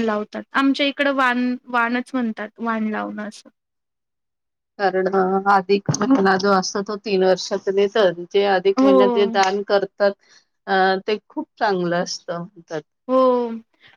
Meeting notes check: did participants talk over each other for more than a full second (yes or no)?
no